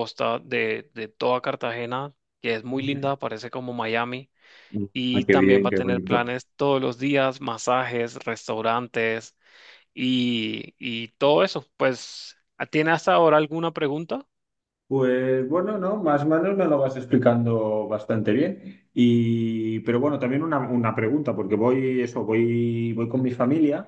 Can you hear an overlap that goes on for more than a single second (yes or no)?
yes